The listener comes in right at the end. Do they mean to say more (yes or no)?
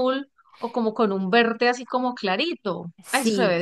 yes